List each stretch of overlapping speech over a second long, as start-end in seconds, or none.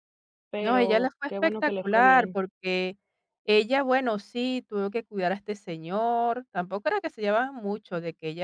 0.6-2.4